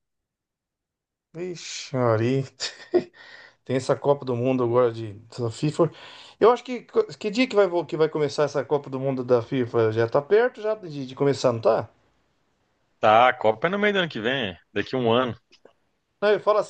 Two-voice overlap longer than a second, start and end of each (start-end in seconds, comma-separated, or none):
none